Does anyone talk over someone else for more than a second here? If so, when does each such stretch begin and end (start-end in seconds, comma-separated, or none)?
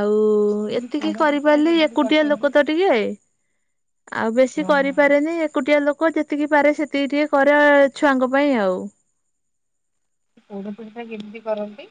1.0-2.7